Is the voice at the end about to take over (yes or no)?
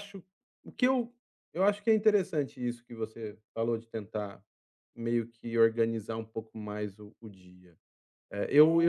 yes